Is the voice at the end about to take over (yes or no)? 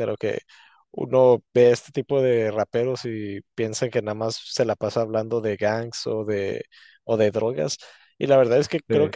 no